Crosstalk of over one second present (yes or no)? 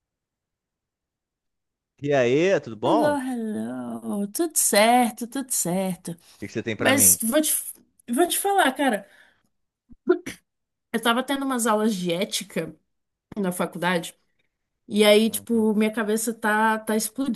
no